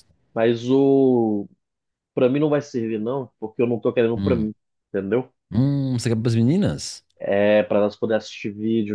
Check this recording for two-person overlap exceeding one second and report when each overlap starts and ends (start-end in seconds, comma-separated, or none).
none